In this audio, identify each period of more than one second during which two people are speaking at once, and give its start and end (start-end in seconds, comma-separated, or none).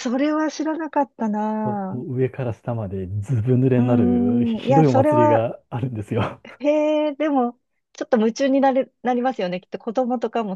3.7-5.5